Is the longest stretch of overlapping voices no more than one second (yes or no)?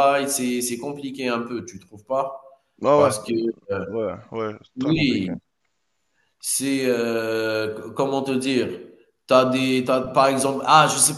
yes